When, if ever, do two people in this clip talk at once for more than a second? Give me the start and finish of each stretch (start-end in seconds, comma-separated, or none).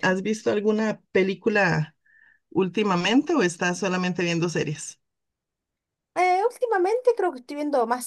none